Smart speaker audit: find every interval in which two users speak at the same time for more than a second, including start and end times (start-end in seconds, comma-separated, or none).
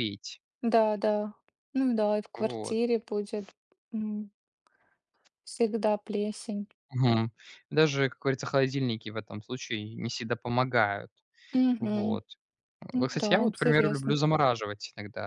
12.9-14.2